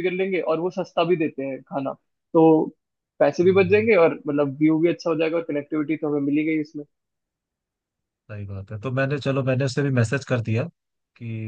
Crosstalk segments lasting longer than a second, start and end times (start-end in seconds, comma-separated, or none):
none